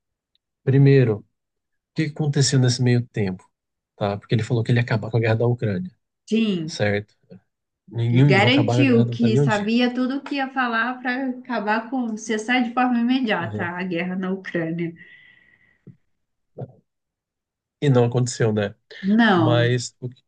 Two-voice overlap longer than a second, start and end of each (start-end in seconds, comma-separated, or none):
8.1-9.7